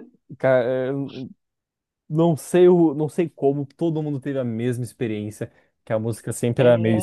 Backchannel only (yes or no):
yes